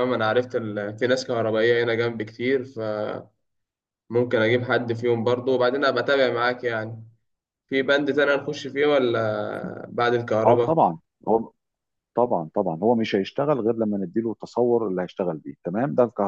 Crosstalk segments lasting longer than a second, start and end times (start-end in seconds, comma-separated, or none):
none